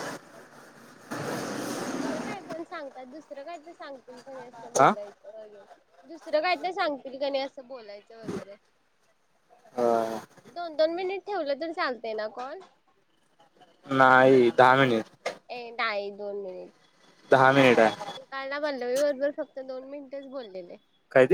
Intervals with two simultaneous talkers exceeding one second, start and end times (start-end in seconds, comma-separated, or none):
none